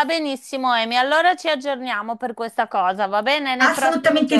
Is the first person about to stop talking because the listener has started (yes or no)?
yes